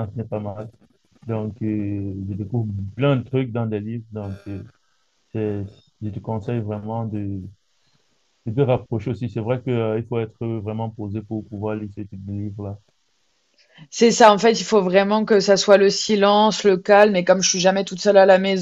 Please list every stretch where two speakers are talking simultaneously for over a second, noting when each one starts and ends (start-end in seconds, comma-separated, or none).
none